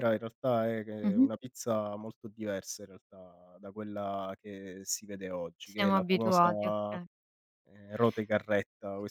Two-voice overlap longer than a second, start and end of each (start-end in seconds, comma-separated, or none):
5.7-7.0